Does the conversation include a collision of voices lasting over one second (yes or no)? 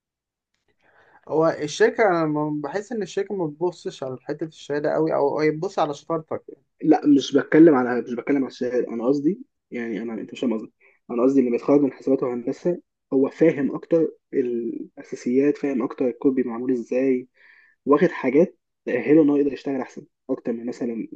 no